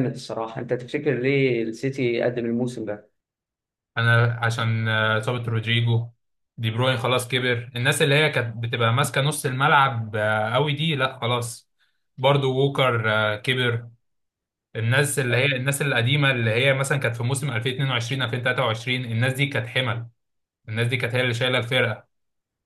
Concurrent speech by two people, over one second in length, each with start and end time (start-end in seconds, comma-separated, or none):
none